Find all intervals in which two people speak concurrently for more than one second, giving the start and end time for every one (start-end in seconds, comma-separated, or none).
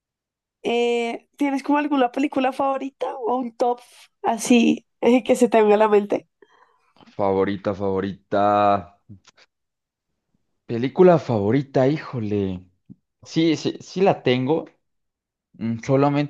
none